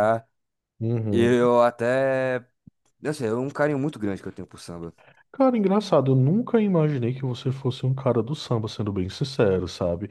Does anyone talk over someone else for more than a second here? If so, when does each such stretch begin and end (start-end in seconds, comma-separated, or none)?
none